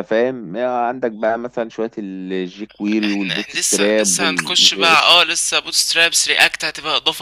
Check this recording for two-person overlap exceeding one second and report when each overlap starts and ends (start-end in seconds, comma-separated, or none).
3.0-5.2